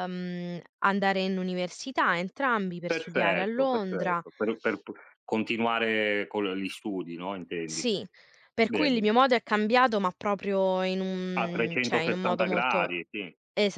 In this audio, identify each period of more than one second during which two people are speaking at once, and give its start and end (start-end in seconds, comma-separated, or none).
2.9-4.2, 11.3-12.9